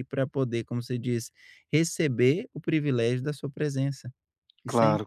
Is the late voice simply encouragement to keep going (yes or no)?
no